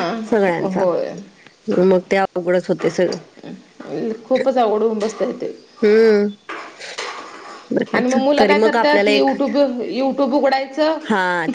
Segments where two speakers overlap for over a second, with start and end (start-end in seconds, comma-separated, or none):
7.9-9.3